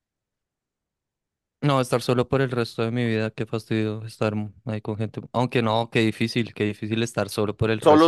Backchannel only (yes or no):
no